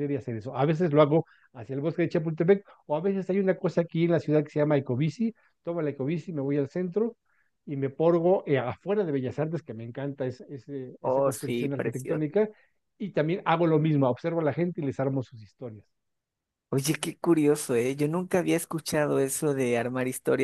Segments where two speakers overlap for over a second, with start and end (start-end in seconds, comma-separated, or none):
11.0-12.2